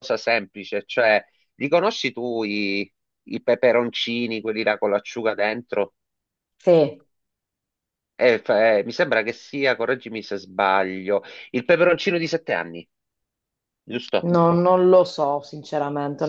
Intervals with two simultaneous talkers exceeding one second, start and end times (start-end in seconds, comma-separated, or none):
none